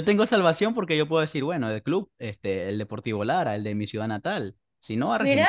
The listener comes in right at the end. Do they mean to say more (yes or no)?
no